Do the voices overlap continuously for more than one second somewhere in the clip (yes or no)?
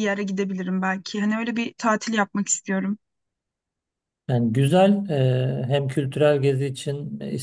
no